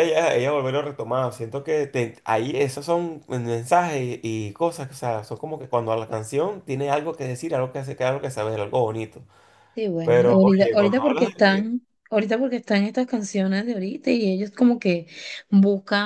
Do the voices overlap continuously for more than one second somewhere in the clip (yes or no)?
yes